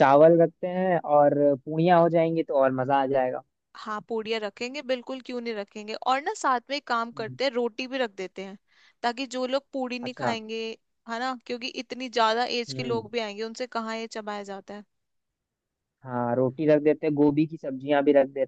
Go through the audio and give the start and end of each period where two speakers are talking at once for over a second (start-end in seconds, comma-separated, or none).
none